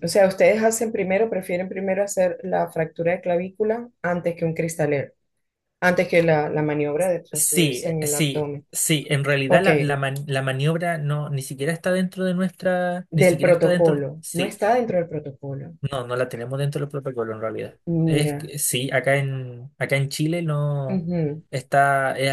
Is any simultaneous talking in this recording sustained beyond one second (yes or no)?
yes